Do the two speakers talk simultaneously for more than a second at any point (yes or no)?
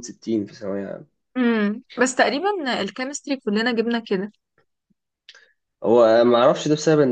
no